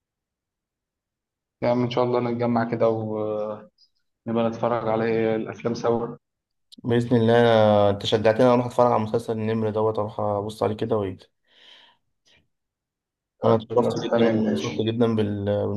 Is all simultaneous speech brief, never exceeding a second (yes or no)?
no